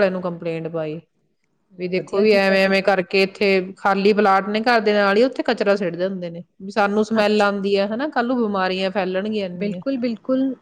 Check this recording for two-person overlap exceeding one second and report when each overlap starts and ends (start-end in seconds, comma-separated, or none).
none